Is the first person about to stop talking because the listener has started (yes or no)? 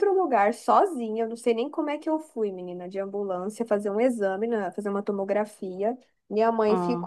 no